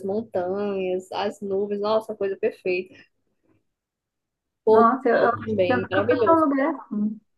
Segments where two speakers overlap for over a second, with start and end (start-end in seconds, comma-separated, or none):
4.7-6.4